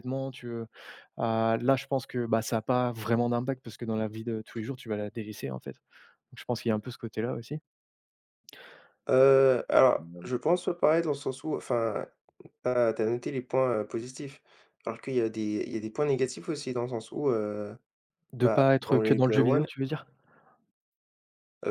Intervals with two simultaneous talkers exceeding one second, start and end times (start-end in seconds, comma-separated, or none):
18.4-19.7